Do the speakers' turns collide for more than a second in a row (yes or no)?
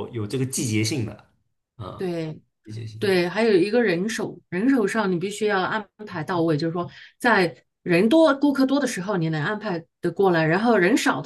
no